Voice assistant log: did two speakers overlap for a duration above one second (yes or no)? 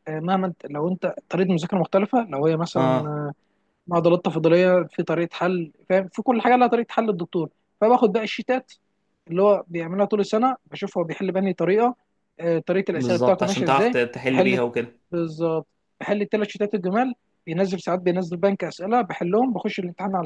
yes